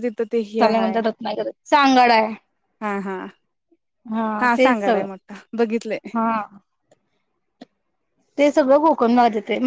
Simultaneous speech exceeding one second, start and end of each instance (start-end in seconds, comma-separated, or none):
none